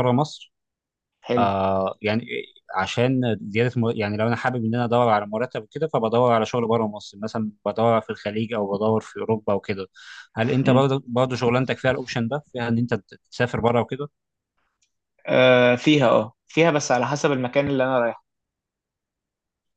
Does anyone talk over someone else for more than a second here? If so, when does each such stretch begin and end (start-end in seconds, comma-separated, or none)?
none